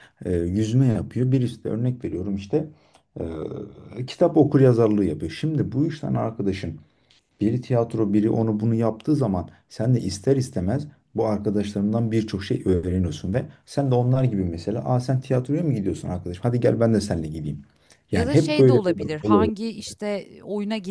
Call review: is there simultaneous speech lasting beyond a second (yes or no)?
yes